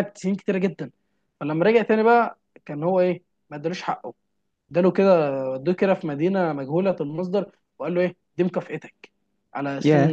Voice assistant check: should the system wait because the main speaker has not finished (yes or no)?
yes